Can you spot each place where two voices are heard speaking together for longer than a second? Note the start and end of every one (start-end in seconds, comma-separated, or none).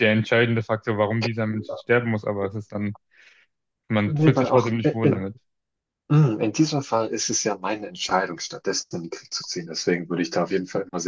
4.0-5.3